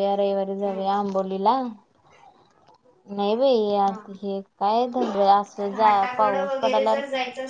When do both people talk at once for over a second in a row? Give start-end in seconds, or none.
none